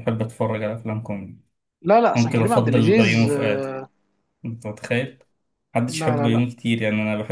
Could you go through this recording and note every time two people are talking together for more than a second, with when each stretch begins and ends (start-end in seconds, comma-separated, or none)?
2.1-3.6